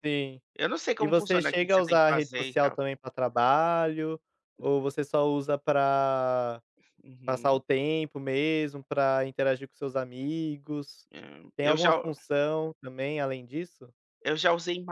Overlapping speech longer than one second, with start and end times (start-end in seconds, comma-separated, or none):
1.0-2.8